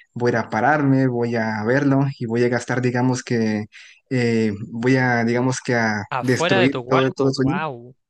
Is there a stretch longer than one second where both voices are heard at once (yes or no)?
yes